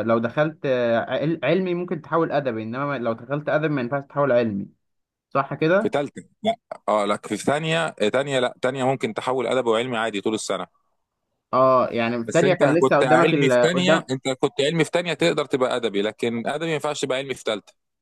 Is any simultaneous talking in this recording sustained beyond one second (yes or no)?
yes